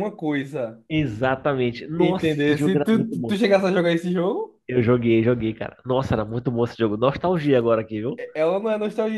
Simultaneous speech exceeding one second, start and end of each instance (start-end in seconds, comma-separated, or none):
2.0-3.4